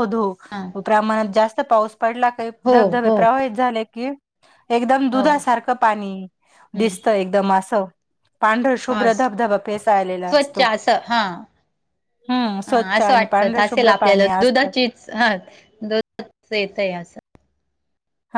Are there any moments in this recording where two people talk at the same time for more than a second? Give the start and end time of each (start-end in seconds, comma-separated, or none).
12.7-14.7